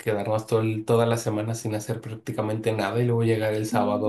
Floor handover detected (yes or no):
no